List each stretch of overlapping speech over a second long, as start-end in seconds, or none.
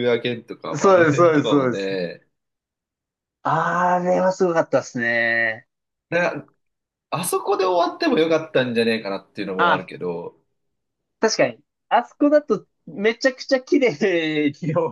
0.7-1.9